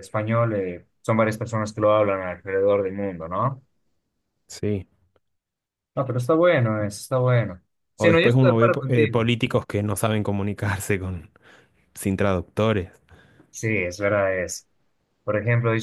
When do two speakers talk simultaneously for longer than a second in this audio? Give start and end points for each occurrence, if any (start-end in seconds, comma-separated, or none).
8.0-9.3